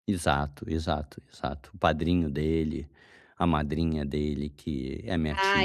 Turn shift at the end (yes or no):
yes